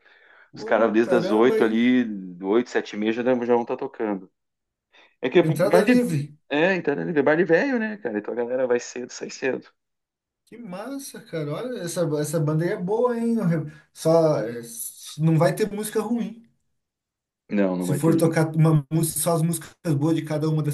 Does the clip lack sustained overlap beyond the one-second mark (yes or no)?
no